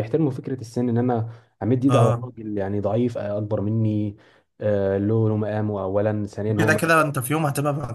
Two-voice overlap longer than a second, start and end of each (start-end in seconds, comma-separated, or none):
none